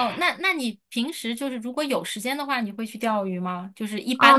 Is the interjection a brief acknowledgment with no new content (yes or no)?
no